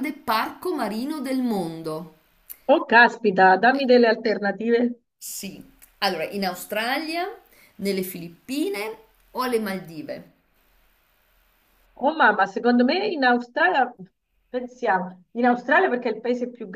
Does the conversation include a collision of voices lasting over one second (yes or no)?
no